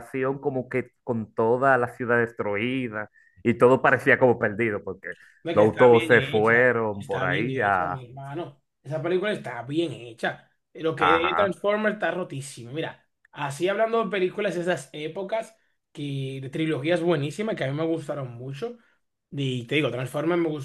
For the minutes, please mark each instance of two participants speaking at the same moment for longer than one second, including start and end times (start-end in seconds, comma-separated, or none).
5.5-8.0